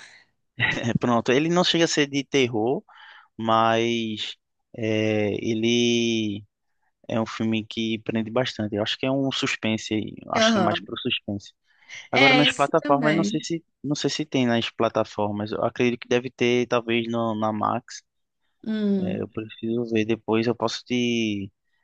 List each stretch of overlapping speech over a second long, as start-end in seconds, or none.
12.1-13.4